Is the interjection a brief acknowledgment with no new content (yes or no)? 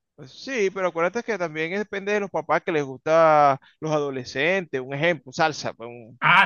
no